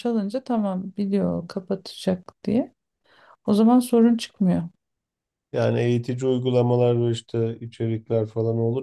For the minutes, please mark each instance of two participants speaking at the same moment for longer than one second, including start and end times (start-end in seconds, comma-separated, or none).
none